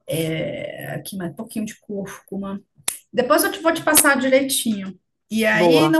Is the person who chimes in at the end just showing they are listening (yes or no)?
yes